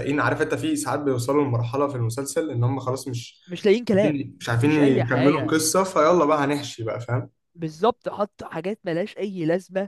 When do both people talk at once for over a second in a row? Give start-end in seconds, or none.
3.9-5.6